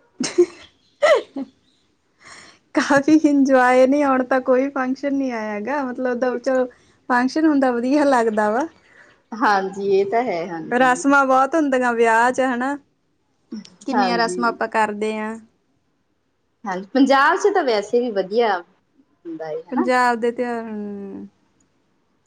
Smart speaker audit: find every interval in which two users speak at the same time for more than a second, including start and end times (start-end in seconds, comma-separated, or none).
none